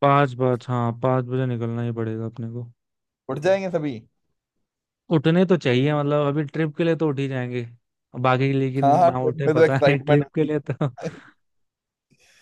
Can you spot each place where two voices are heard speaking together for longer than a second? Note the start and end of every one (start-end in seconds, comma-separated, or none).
8.8-10.5